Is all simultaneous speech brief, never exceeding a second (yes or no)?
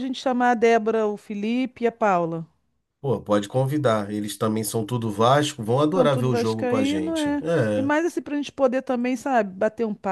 no